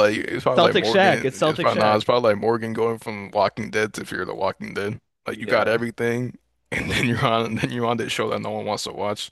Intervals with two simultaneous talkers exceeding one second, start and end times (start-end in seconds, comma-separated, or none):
0.6-2.1